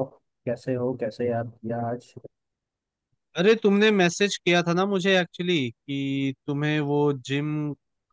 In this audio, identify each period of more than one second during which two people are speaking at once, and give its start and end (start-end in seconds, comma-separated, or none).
none